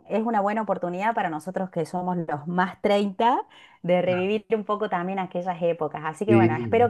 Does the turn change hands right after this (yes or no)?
no